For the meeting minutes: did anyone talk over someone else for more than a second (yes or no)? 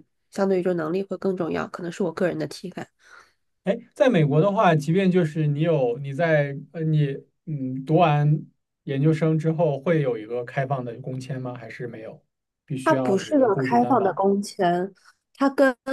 yes